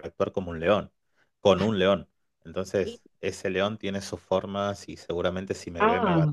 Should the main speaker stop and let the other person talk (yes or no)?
no